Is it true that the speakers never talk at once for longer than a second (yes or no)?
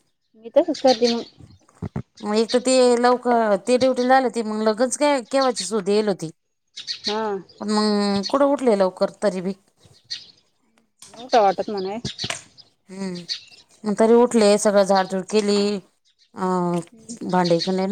yes